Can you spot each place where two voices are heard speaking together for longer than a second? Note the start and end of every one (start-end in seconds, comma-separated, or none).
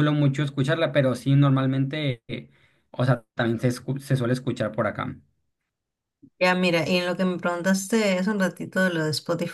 none